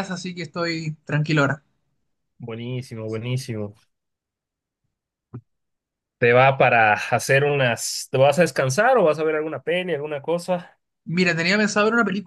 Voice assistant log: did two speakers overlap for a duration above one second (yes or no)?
no